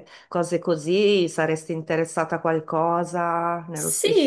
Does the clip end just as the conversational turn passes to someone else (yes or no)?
yes